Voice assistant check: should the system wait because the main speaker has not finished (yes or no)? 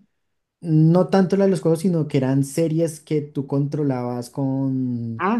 no